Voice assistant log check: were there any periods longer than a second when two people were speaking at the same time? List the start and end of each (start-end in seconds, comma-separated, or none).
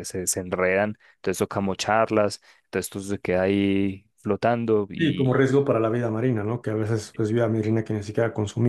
none